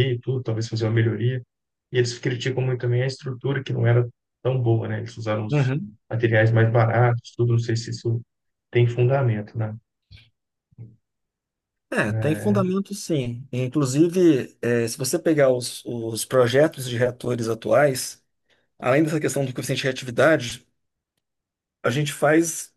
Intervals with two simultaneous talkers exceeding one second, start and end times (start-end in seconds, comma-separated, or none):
none